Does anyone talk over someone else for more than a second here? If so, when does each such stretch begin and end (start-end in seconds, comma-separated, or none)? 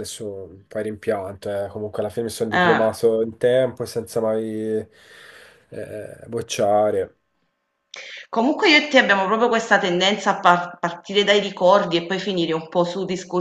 none